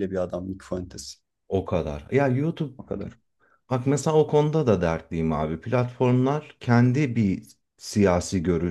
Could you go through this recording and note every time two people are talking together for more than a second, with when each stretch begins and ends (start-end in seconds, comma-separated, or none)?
none